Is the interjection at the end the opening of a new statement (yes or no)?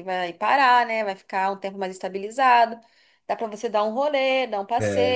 no